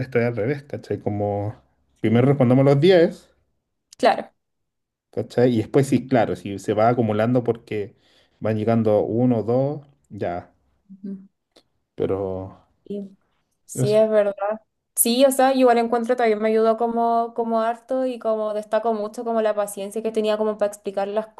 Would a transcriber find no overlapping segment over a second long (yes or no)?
yes